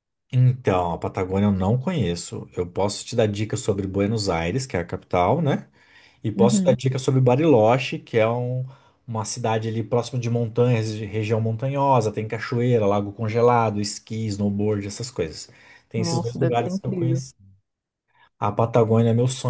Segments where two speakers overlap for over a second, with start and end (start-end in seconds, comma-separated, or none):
16.0-17.2